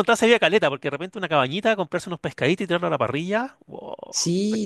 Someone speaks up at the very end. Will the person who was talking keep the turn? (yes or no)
no